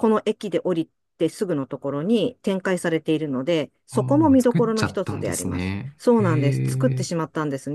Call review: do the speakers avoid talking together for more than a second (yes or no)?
no